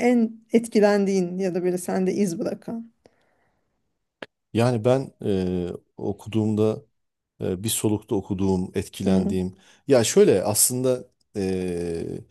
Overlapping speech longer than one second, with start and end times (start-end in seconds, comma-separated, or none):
none